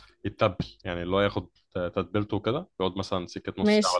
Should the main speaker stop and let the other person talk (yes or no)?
no